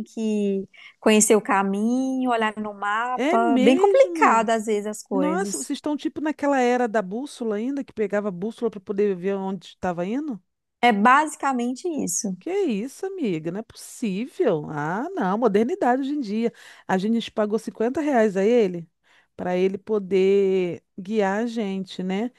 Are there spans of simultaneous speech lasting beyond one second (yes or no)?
yes